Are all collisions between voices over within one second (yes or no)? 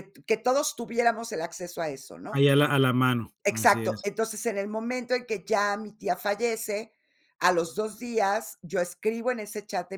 yes